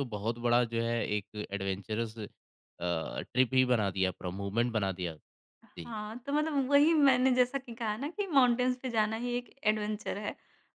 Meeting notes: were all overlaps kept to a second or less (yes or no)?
yes